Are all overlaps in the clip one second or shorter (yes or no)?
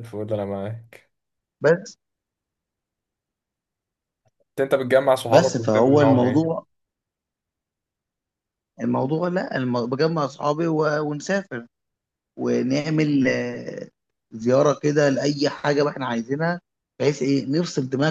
no